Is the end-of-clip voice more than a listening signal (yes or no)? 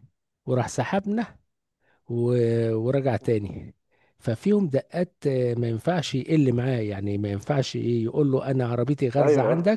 no